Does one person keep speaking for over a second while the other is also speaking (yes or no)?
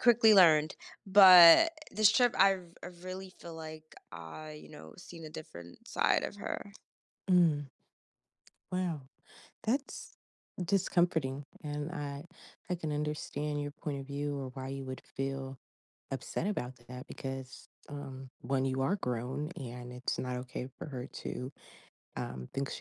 no